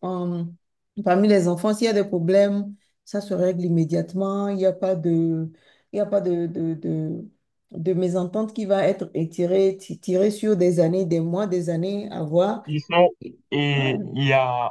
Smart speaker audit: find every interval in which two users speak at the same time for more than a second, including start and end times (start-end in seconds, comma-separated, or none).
none